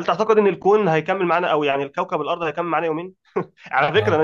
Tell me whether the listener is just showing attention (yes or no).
yes